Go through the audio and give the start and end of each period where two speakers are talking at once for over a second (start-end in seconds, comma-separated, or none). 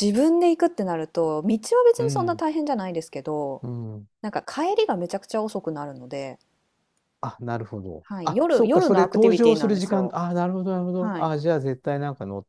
8.0-10.1